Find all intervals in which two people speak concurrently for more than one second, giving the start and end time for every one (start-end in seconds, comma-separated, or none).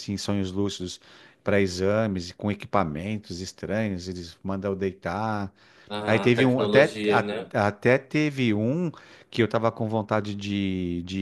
6.0-7.5